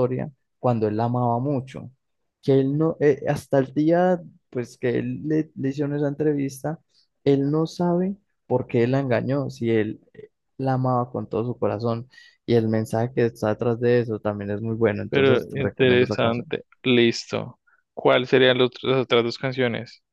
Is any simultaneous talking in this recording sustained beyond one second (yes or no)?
yes